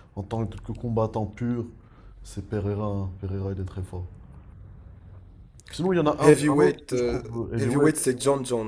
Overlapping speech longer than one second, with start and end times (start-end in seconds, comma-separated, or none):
6.2-7.9